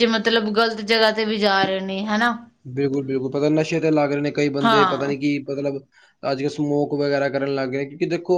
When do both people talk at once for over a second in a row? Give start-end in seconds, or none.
none